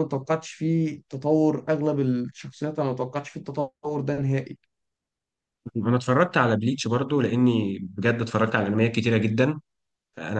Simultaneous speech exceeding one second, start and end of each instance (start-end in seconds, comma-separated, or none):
none